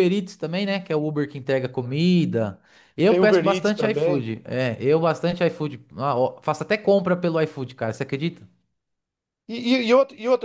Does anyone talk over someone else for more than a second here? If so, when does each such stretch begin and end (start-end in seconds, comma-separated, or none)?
3.0-4.3